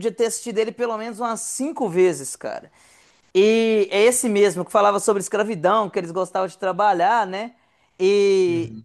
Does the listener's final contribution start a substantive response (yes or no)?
no